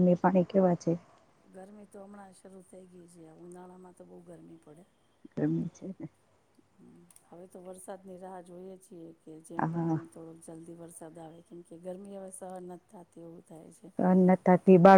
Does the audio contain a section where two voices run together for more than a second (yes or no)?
no